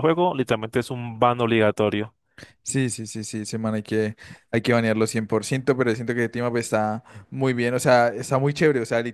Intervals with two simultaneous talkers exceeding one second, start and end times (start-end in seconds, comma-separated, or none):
none